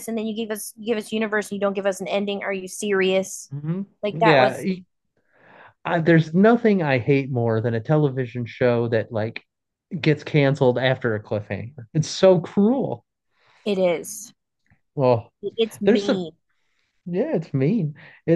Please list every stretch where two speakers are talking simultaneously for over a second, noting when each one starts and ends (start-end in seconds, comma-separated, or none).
none